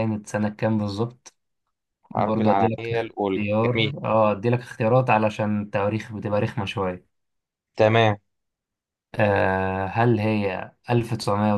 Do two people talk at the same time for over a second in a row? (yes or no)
yes